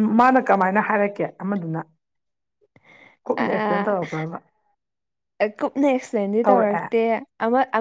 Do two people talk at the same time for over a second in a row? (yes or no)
no